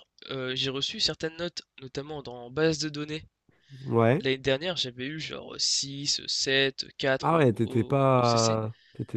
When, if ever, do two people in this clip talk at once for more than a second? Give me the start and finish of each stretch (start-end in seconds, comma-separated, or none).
7.2-8.6